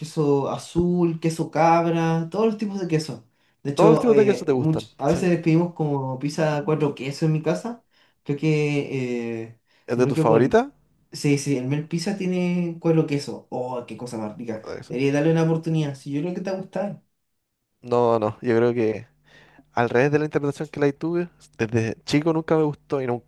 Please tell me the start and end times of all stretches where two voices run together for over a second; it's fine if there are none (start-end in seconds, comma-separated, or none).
3.8-5.3